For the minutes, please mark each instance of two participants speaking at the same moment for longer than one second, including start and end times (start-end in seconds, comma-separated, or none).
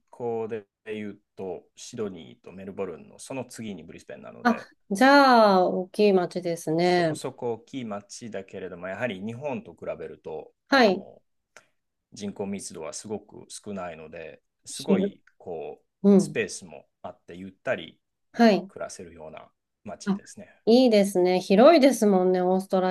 none